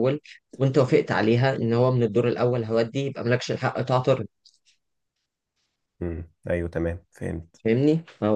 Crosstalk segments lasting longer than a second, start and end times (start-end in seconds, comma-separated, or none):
none